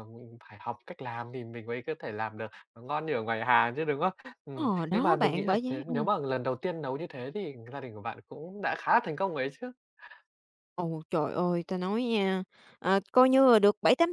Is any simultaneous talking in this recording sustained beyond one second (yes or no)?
yes